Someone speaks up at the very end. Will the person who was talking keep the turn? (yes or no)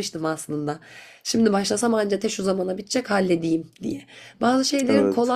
yes